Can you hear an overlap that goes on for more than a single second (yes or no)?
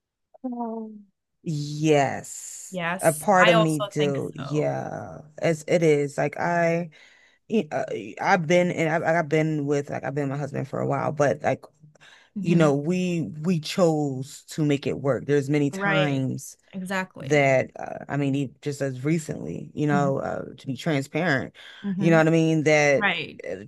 yes